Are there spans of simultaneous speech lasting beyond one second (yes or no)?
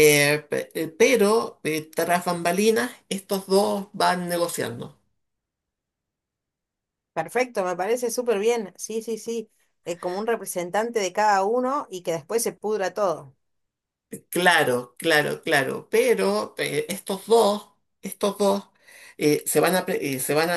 no